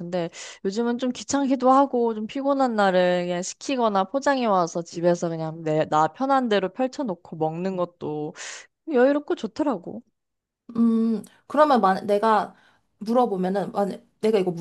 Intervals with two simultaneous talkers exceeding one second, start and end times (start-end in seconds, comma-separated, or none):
none